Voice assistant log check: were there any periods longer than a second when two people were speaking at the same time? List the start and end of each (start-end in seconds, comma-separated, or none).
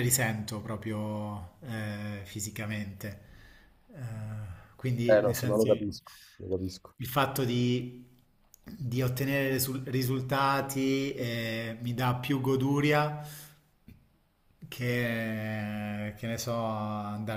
5.1-6.9